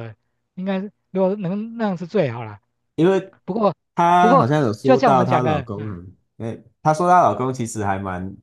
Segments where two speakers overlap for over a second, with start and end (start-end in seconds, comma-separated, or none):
4.2-6.0